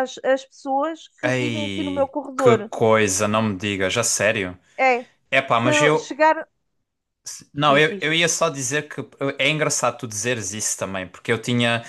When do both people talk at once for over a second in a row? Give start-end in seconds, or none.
1.2-2.7